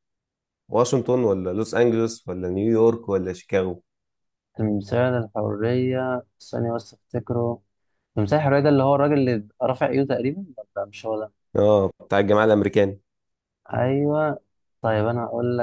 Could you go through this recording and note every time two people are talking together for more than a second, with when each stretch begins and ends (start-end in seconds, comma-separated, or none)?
none